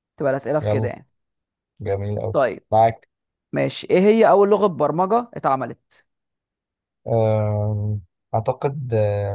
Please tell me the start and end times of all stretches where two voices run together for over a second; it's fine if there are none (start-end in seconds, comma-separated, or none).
none